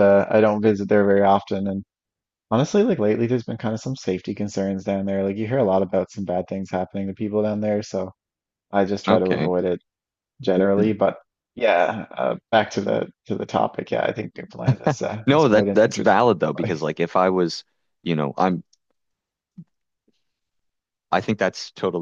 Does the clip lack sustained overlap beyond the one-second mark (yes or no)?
no